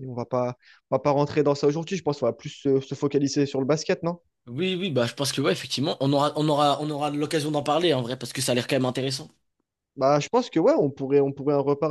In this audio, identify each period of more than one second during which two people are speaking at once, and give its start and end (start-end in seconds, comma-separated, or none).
none